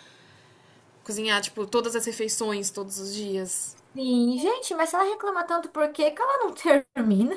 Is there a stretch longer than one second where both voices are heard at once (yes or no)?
no